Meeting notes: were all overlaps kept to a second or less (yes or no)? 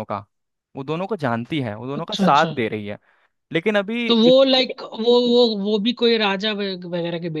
yes